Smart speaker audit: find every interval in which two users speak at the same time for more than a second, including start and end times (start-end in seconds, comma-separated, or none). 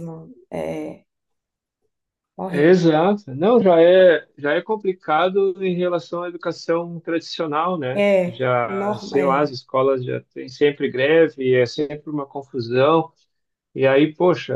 7.9-9.5